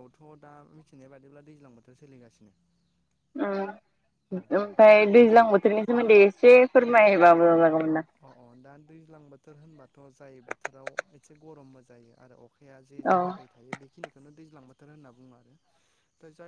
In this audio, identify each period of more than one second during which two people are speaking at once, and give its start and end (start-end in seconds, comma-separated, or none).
none